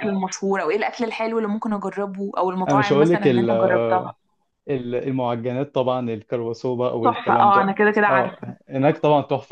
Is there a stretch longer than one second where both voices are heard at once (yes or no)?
yes